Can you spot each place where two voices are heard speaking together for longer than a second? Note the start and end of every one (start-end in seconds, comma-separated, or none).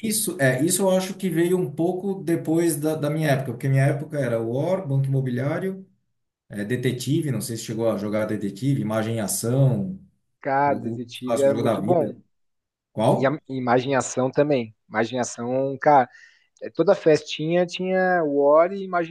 10.7-12.2